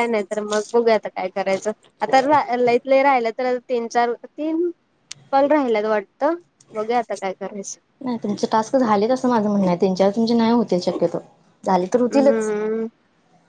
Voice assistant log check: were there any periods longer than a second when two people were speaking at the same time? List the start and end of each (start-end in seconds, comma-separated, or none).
none